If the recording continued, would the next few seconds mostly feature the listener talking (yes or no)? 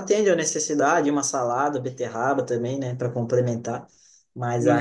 yes